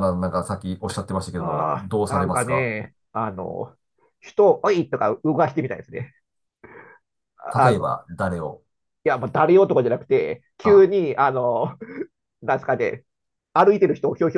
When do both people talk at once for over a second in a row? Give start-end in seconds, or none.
1.4-2.7